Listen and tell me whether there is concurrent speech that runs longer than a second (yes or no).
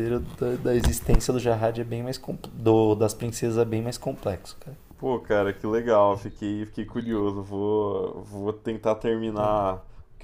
no